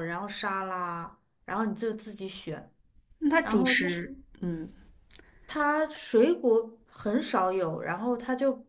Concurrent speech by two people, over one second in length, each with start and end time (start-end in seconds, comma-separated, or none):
none